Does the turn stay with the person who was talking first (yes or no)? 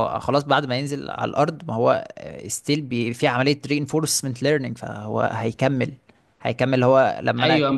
no